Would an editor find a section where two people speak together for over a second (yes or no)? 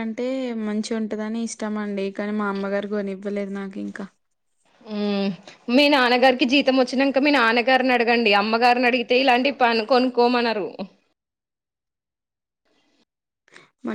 no